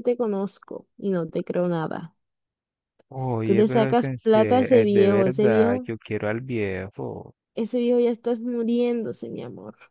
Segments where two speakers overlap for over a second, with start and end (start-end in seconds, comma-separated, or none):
3.4-5.9